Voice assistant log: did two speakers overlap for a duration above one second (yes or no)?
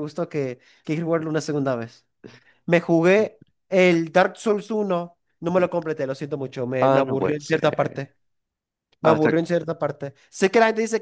yes